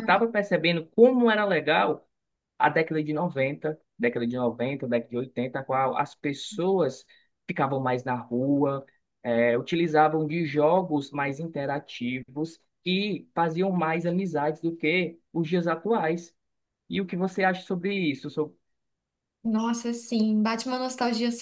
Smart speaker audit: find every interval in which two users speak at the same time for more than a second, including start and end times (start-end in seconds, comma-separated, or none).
none